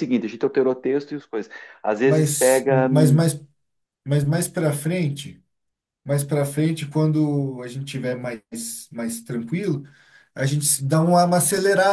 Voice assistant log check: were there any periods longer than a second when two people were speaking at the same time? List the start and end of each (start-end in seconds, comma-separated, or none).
2.0-3.2